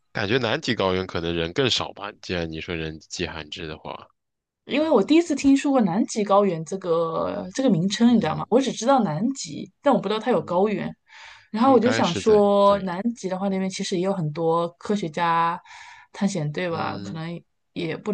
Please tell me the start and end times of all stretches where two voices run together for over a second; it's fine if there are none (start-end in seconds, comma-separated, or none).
11.6-12.9